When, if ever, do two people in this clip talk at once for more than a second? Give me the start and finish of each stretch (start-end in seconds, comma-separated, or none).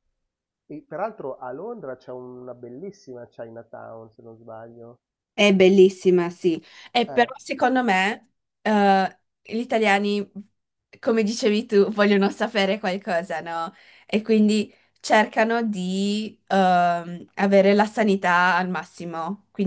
none